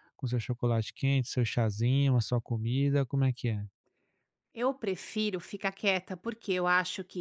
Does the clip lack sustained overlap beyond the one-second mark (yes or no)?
yes